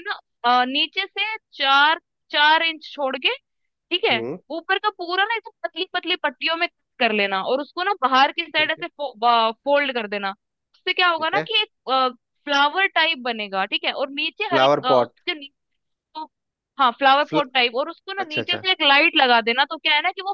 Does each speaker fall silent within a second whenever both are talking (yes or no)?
yes